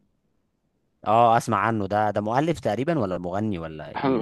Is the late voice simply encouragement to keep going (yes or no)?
no